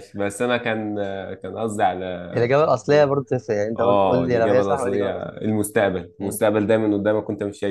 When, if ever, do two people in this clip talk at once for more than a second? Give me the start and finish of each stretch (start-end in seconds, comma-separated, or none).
3.8-5.3